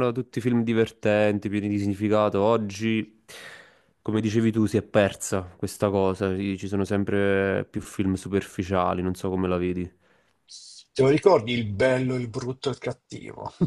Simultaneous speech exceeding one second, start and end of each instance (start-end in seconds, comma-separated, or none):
none